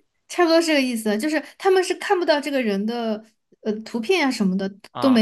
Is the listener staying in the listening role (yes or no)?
yes